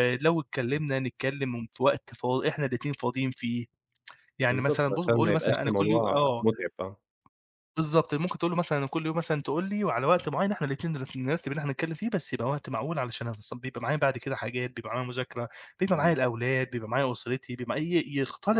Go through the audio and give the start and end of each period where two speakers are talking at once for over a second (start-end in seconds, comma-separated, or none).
4.5-6.5